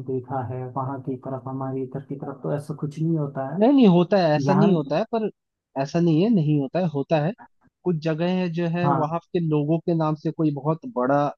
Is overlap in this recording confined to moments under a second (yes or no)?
yes